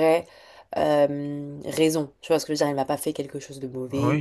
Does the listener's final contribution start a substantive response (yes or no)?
yes